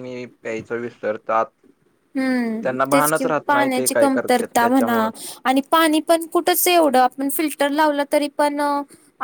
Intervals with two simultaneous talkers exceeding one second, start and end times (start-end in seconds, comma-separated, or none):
2.6-5.0